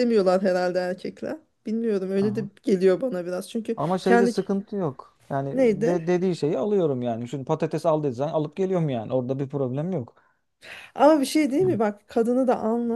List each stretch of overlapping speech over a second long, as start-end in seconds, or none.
none